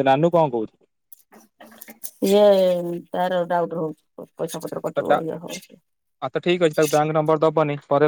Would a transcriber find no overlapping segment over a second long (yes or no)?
yes